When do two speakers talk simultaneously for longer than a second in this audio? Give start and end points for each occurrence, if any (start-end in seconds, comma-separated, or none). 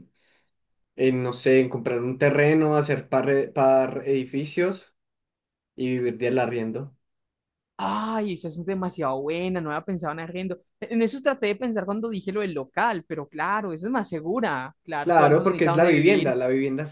15.0-16.4